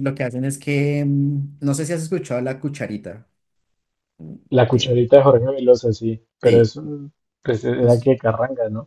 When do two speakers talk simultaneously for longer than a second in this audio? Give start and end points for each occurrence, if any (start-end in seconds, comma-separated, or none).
none